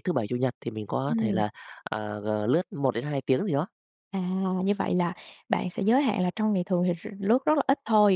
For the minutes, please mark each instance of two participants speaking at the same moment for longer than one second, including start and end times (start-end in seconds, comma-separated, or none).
none